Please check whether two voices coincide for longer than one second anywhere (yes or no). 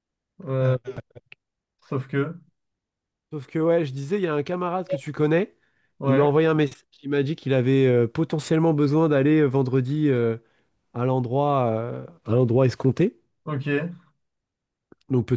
no